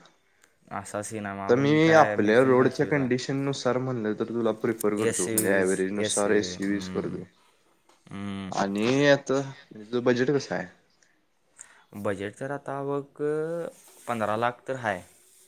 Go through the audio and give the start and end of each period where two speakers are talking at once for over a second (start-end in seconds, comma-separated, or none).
5.1-7.2